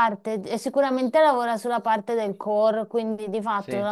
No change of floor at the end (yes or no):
yes